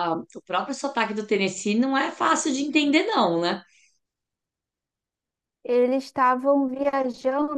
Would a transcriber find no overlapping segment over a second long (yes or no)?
yes